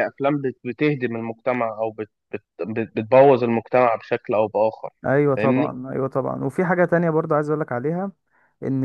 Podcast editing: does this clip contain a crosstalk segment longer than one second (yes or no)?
no